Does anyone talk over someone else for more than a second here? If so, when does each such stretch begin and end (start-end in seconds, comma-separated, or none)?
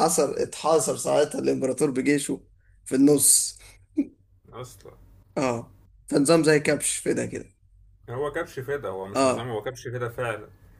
none